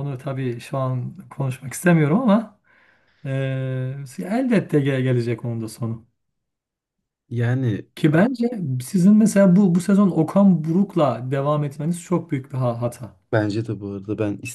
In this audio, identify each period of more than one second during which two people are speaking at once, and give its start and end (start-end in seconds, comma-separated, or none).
none